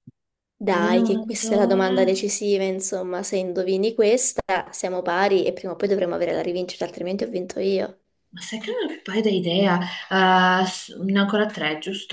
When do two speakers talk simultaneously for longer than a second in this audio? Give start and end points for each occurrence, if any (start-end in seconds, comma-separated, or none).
0.8-2.2